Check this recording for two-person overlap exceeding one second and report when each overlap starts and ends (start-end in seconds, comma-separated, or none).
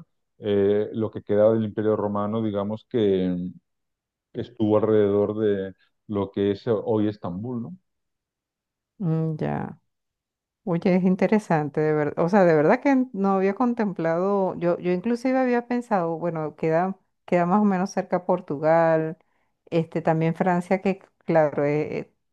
none